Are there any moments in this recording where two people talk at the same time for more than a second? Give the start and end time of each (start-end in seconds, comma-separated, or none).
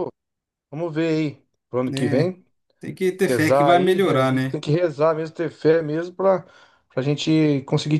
3.3-4.6